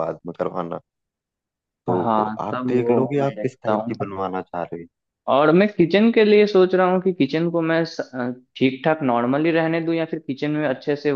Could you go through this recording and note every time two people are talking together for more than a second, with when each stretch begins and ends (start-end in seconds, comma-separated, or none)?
1.9-3.9